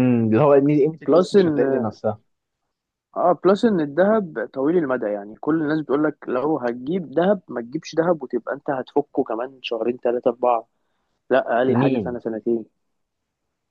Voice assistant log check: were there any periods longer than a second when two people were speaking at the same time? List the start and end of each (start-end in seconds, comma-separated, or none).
none